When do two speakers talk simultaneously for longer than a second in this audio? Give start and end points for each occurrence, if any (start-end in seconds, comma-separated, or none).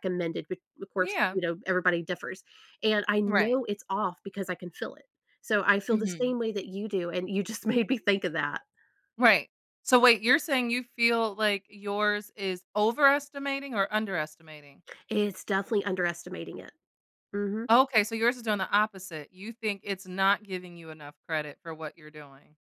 none